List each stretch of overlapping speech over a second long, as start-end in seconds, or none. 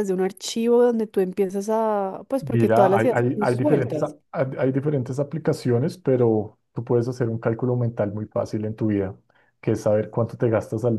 2.4-4.2